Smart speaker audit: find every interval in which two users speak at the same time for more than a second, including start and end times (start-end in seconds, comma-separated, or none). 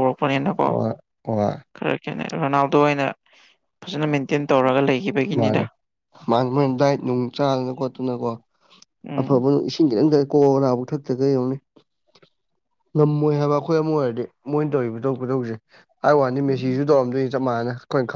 none